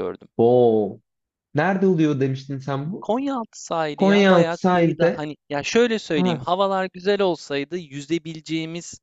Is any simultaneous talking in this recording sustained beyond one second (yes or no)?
yes